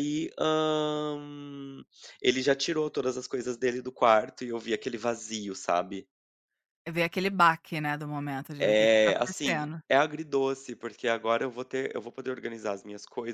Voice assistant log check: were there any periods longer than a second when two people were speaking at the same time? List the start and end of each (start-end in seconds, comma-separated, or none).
8.6-9.8